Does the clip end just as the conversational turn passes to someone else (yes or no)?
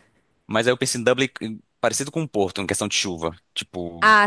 yes